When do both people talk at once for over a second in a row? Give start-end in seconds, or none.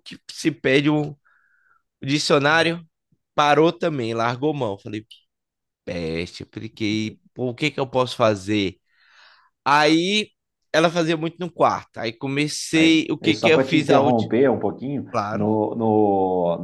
12.7-14.3